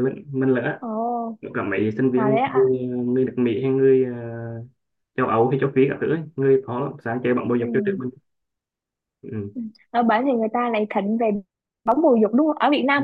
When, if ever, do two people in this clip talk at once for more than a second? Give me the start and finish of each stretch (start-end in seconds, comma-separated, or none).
none